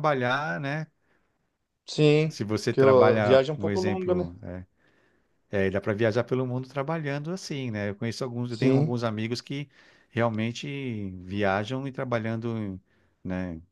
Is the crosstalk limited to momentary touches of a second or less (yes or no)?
no